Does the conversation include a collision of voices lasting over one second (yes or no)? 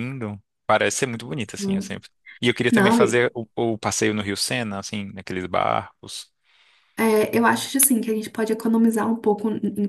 no